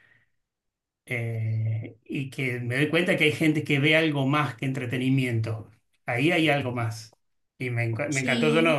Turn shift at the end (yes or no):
no